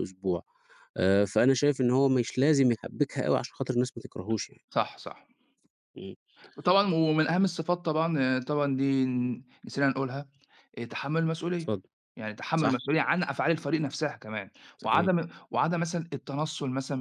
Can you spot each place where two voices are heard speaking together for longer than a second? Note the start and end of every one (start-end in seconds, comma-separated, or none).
none